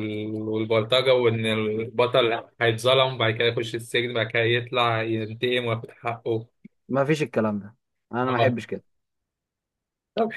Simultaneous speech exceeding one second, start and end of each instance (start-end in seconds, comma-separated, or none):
none